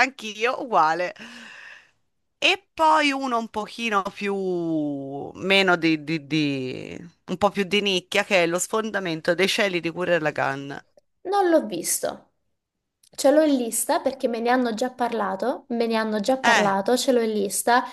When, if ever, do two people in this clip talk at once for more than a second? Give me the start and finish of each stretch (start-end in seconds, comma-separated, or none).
none